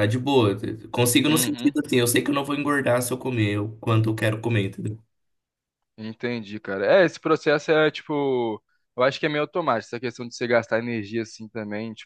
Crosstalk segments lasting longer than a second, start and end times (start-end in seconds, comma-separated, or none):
none